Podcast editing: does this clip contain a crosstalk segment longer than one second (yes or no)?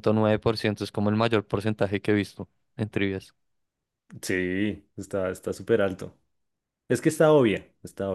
no